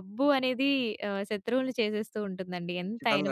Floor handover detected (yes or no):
yes